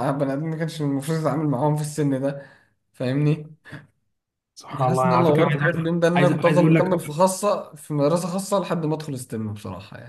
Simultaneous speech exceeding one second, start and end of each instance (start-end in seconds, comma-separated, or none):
4.9-7.1